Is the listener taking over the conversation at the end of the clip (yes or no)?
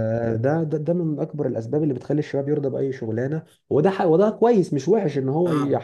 no